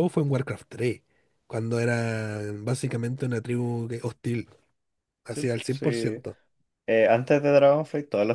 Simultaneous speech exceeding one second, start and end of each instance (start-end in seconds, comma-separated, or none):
none